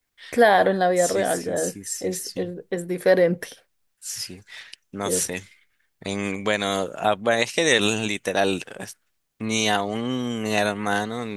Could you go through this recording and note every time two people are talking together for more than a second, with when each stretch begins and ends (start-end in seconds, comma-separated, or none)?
0.9-2.5